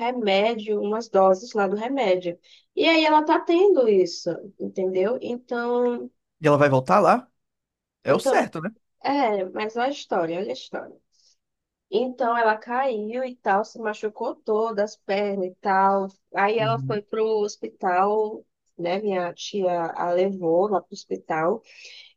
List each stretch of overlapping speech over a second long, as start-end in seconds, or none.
none